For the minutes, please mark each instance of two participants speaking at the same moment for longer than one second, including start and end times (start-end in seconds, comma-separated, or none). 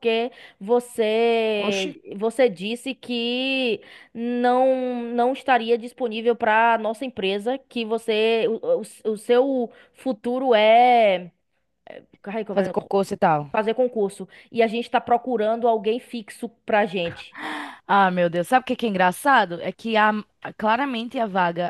none